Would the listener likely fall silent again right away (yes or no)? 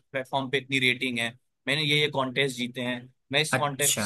yes